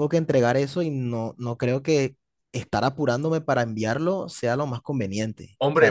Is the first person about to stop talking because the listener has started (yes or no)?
yes